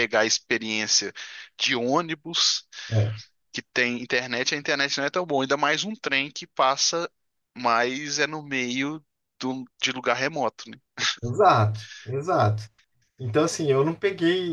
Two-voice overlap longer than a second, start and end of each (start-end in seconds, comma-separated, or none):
none